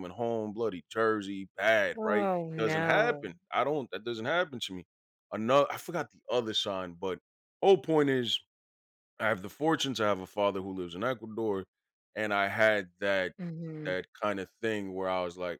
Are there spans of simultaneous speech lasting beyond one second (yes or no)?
yes